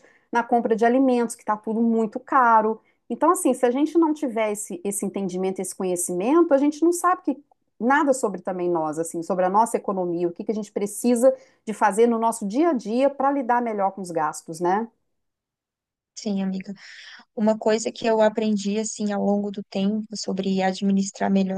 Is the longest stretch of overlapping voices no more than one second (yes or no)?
yes